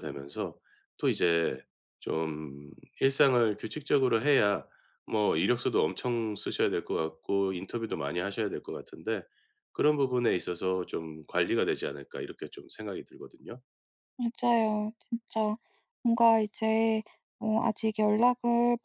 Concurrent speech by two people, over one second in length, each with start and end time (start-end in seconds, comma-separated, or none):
none